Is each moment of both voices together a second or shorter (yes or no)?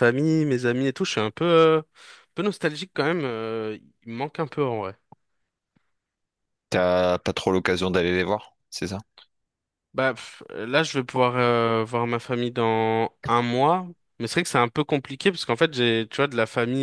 yes